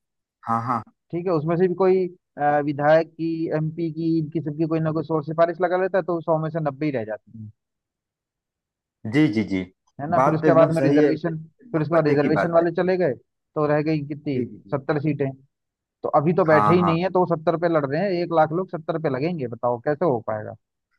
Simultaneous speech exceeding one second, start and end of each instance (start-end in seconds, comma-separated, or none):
10.2-12.7